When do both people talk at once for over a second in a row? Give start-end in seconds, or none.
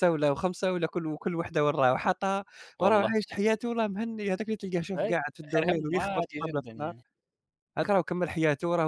5.0-6.9